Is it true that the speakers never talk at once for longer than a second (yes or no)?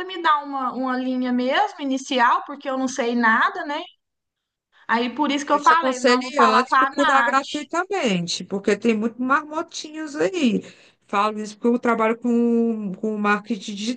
no